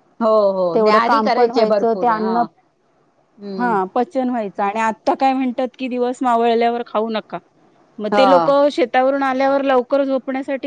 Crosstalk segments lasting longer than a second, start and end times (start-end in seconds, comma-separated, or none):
0.7-2.4